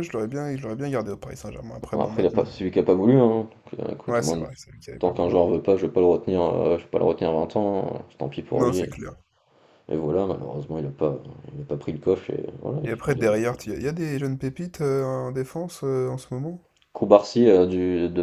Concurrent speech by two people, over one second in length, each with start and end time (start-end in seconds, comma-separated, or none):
none